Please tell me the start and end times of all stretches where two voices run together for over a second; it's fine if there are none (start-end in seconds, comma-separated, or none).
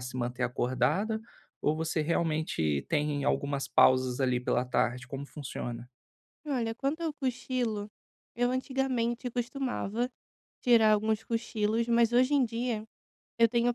none